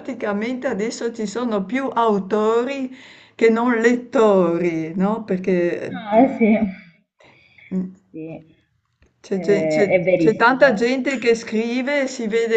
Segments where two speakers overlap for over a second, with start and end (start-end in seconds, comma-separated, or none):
9.3-10.9